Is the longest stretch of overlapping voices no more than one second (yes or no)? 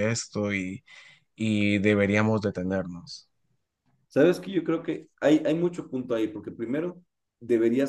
yes